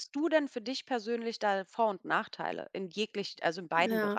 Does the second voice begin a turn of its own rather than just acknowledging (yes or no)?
yes